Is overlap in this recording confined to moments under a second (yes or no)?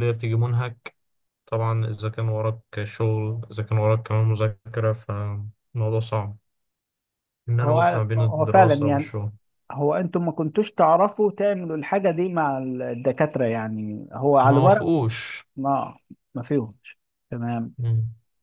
no